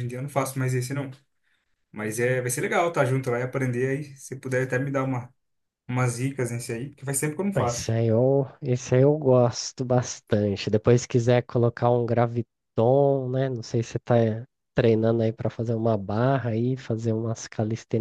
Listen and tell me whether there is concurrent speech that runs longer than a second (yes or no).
no